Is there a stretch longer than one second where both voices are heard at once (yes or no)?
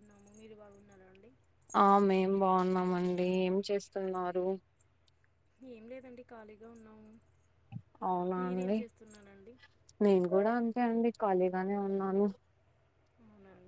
no